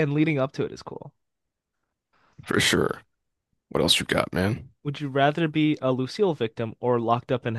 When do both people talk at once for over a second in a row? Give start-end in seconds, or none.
none